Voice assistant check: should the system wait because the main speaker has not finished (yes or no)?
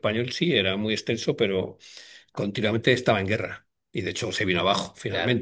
yes